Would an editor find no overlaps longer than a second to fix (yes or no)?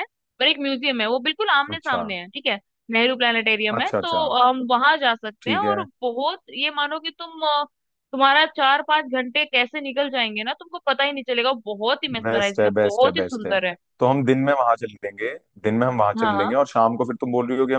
no